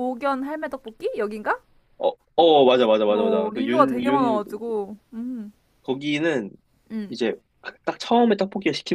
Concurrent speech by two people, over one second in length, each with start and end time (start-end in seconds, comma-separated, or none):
3.1-4.4